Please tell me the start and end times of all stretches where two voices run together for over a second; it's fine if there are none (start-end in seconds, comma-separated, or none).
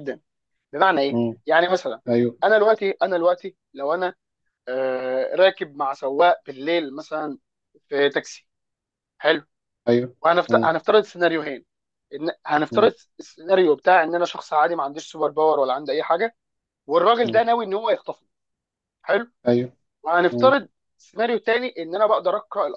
none